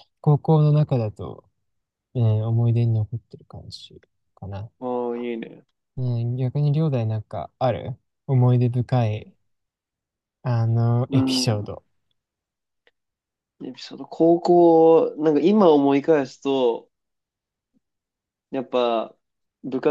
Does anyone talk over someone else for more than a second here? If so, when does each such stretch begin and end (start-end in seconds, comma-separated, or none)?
none